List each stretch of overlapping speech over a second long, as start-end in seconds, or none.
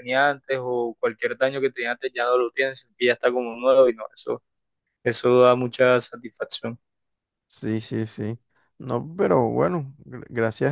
none